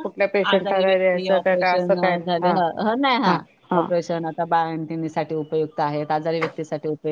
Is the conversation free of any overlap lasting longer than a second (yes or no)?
no